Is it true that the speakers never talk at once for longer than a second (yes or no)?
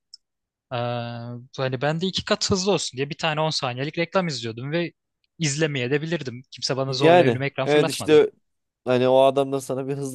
no